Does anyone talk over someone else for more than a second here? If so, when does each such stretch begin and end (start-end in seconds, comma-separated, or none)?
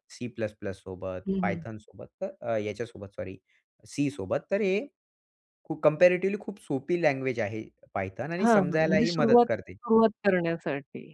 8.4-9.7